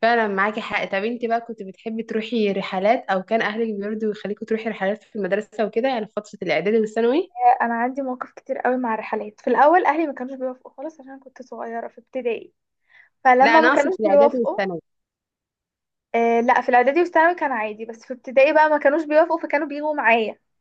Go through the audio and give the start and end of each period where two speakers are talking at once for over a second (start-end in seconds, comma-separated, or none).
13.4-14.6